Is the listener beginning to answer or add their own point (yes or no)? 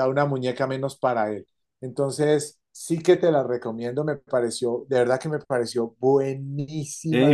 yes